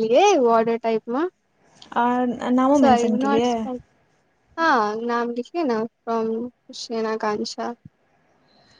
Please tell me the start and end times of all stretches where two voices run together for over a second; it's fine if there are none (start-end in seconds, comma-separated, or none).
none